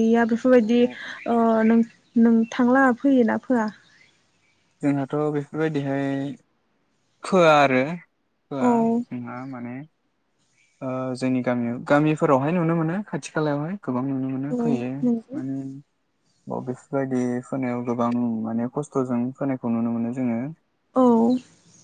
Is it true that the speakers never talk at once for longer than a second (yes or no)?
yes